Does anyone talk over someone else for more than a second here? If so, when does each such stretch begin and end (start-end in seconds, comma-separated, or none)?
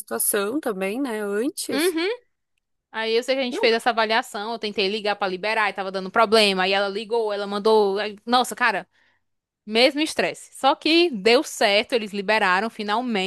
none